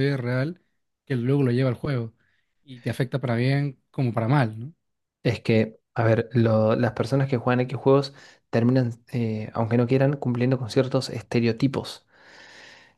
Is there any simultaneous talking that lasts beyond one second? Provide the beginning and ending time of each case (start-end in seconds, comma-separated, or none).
none